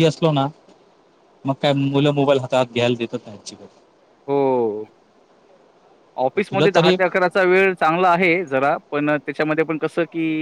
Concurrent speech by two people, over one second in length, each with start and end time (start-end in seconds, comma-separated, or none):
none